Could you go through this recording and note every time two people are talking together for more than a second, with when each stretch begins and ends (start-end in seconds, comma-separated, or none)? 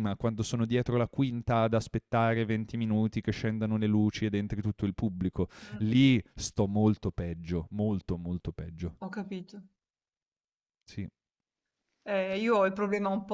none